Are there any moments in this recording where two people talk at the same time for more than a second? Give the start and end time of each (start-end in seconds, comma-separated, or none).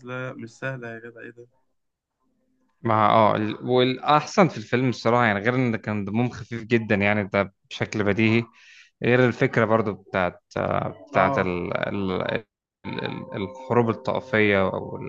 none